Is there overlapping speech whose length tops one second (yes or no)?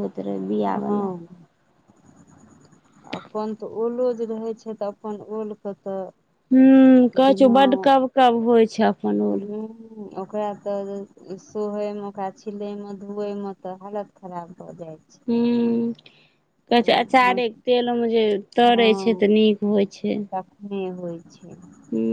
no